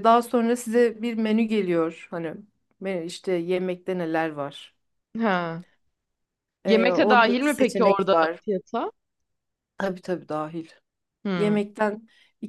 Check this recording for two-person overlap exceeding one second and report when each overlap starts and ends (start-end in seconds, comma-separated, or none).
6.7-8.4